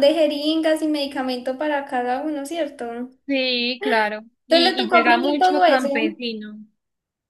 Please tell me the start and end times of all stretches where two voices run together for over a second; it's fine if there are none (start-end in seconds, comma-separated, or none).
4.5-6.2